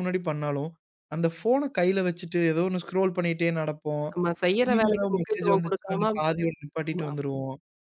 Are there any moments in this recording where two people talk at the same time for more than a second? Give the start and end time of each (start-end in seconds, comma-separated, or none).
4.6-6.0